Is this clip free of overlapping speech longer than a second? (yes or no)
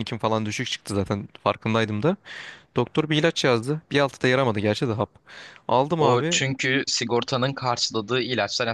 yes